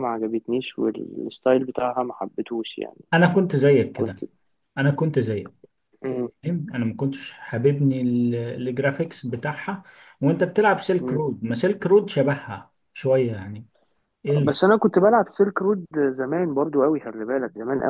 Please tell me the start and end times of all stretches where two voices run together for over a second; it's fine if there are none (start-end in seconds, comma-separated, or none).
none